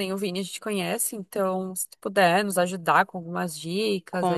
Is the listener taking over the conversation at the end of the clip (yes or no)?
yes